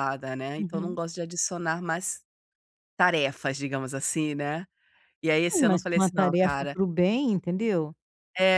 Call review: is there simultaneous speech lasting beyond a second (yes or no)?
yes